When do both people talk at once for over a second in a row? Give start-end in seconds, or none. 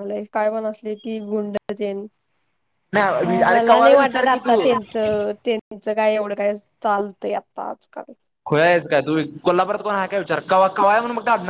3.2-4.7